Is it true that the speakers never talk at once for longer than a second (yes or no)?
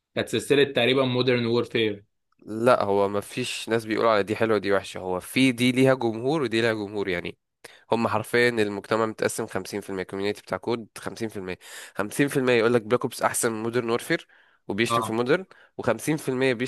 yes